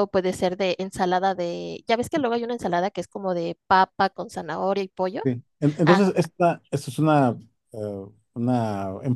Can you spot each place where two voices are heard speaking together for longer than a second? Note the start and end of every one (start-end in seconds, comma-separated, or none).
none